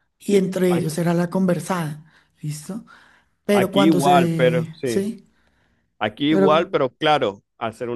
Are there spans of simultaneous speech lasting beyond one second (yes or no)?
yes